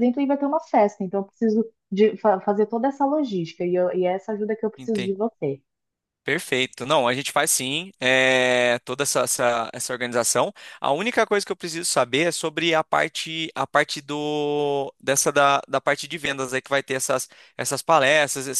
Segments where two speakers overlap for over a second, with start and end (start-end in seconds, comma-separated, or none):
none